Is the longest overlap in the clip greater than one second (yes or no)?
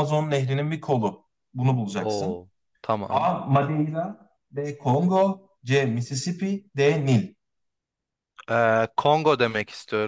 no